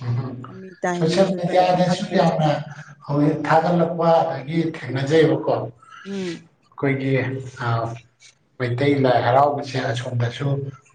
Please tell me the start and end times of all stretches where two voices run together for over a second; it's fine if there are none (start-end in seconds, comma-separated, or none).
1.0-2.3